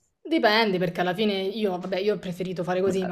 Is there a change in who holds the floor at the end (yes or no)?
no